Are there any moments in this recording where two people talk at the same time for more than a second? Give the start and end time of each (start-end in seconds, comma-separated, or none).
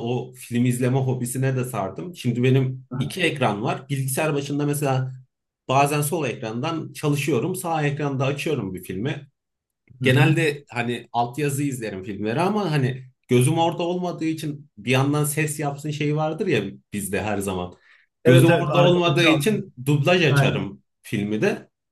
18.2-19.6